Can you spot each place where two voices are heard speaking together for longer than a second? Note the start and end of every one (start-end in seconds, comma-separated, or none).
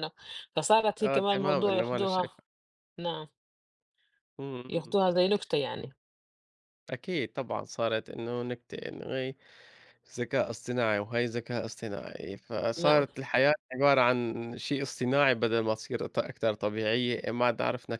1.0-2.3